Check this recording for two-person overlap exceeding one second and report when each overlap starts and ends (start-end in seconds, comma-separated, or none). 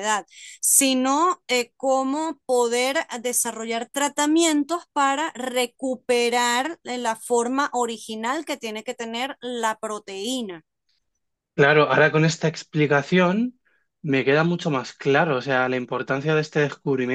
none